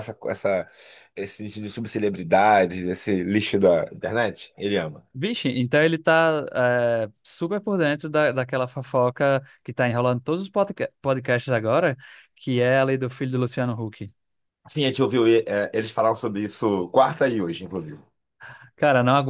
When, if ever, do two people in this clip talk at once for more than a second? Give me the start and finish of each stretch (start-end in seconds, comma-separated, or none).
none